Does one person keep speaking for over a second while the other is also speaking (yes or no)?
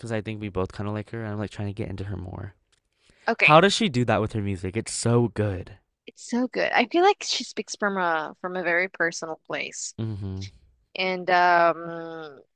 no